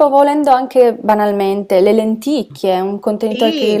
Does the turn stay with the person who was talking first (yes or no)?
no